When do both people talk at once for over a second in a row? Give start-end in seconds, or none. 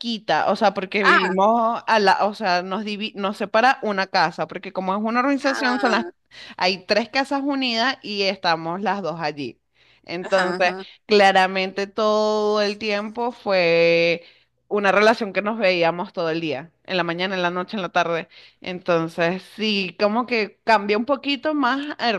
none